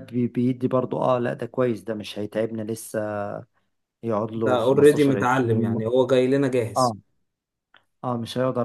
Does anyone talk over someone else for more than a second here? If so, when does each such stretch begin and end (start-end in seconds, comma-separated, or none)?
4.3-5.8